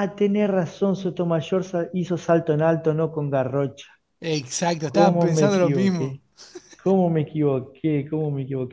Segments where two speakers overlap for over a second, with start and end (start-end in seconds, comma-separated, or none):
4.9-6.2